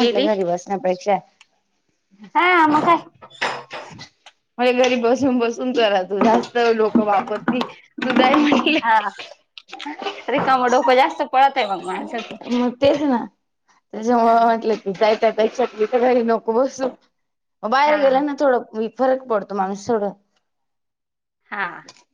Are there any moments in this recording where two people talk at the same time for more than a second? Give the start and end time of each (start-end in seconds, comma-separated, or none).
none